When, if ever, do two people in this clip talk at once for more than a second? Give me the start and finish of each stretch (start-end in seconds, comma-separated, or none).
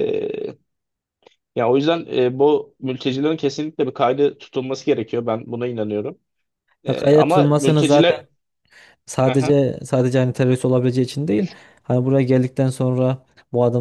6.9-8.3